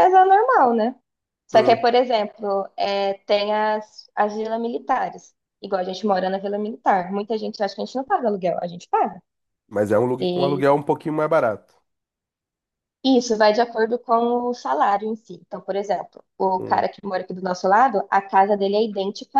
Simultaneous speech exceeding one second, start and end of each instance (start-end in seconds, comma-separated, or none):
none